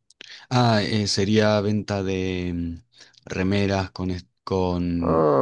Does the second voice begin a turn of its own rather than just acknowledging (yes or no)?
no